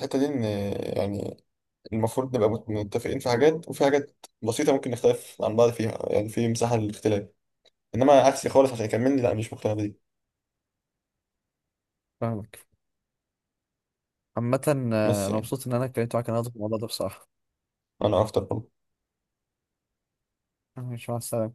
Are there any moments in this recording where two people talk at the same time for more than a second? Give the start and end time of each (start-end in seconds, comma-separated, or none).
none